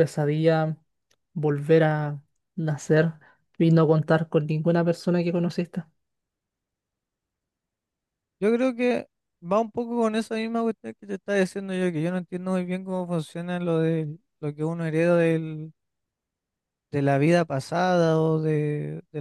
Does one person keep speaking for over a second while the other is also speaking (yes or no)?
no